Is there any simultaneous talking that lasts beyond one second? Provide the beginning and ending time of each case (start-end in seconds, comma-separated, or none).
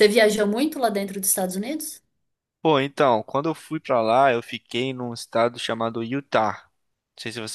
none